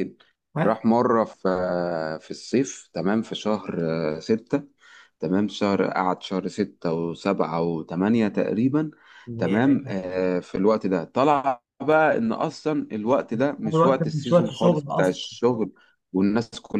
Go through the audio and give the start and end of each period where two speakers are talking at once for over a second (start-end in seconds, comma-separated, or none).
13.7-15.2